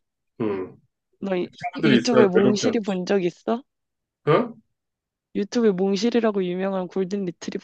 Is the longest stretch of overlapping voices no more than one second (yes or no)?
no